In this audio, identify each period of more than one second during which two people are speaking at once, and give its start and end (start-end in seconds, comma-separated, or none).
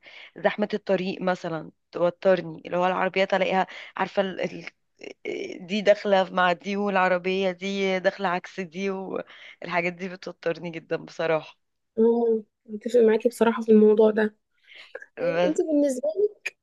none